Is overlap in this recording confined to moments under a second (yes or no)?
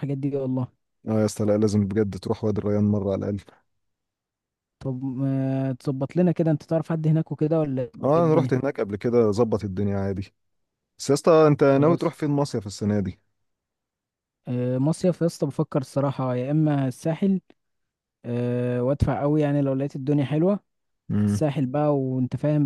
yes